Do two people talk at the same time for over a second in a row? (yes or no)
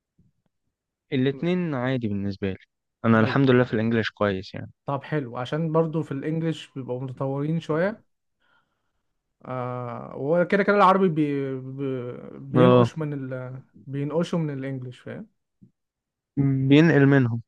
no